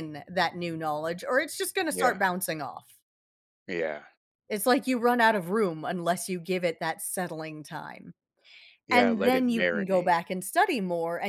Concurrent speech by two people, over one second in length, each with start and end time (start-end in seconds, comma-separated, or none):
8.9-10.1